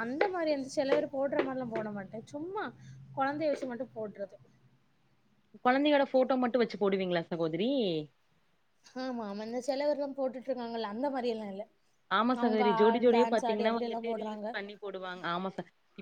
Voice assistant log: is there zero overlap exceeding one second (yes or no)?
no